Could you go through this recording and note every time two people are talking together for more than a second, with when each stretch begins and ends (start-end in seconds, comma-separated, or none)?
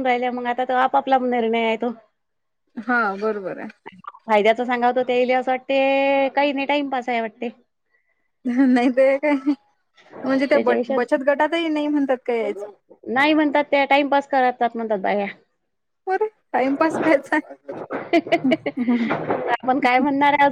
none